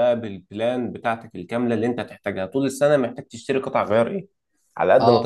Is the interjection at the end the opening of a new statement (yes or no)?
no